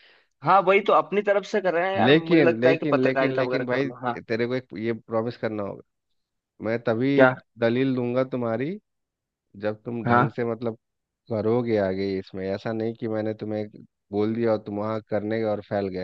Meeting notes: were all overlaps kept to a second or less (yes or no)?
no